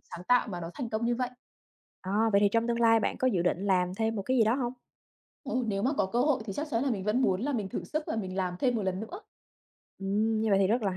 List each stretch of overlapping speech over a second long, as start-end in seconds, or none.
none